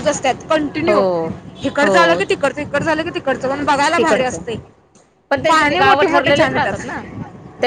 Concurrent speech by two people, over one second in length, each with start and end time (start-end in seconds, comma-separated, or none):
5.5-6.8